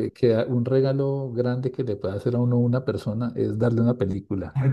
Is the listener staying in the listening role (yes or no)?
yes